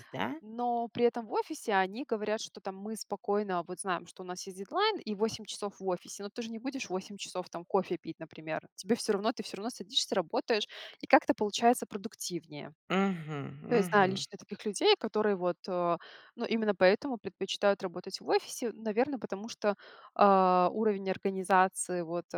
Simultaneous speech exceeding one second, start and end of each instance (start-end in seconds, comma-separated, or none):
none